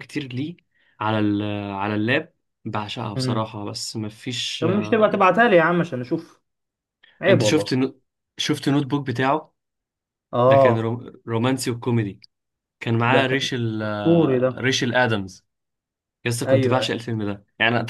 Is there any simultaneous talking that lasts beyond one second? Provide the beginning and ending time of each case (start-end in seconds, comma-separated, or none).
13.1-14.7